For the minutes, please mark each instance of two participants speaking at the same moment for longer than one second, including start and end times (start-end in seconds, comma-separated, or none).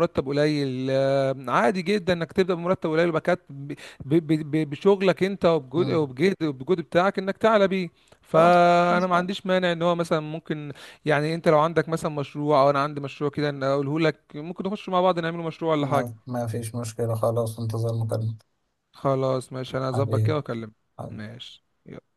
none